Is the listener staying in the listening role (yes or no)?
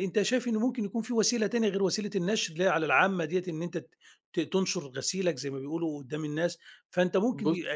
yes